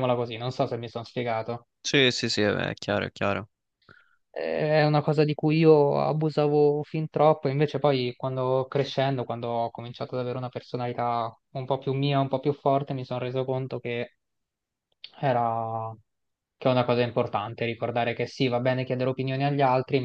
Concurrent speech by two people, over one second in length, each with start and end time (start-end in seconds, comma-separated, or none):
none